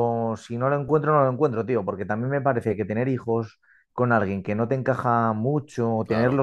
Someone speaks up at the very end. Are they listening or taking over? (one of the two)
listening